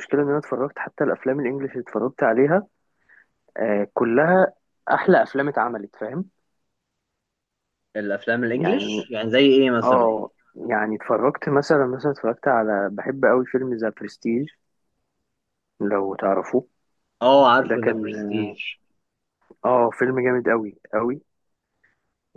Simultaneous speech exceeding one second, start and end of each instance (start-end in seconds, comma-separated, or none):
none